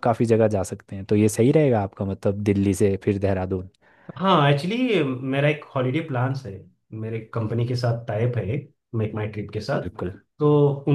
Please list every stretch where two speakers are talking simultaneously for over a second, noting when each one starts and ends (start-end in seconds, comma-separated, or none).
none